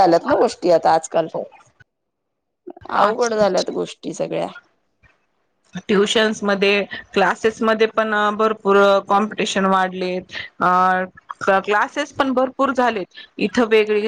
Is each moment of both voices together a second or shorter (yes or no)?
yes